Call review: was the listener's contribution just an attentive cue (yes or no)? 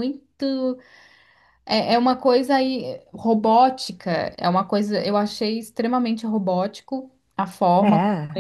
yes